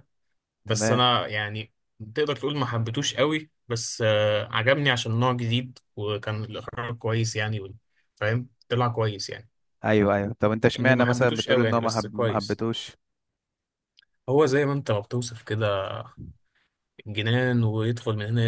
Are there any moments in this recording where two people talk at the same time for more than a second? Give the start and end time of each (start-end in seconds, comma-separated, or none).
10.8-12.6